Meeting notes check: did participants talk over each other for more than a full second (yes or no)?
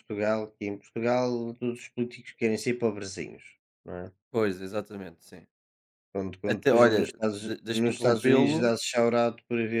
yes